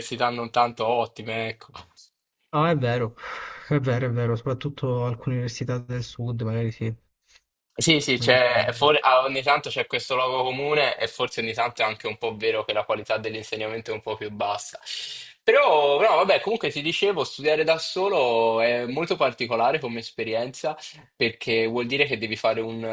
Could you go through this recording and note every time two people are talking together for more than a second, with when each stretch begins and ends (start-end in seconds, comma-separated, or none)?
none